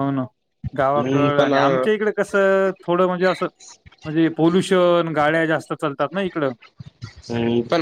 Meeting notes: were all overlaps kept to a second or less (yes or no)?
no